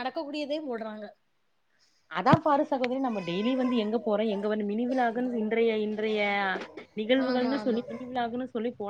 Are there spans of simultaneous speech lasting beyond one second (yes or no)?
no